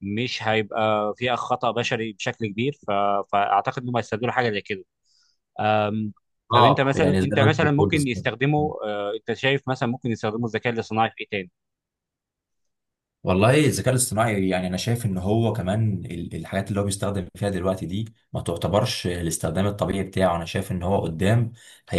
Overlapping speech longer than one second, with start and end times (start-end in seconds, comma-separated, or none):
6.5-8.2